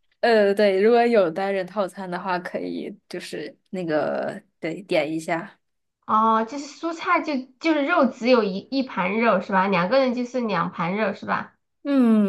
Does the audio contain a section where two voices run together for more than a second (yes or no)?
no